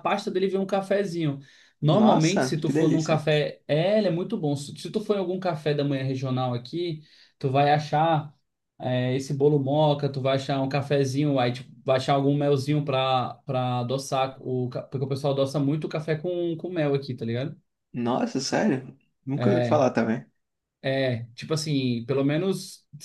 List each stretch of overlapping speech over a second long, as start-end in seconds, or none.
1.9-3.2